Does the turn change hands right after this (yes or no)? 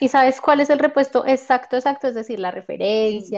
yes